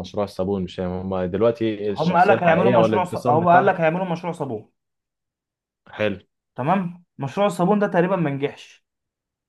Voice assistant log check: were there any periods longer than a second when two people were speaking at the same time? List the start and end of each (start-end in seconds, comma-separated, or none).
2.0-3.8